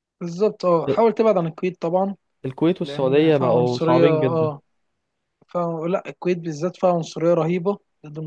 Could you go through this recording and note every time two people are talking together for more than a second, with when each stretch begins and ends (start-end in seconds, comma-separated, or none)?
2.8-4.5